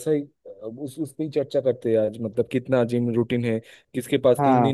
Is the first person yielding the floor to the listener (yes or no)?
no